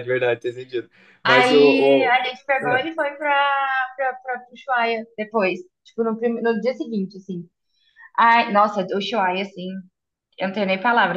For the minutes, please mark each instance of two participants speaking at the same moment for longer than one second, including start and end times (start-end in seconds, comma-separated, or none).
1.2-2.8